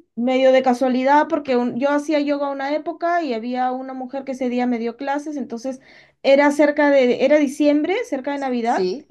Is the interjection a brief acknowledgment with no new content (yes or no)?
yes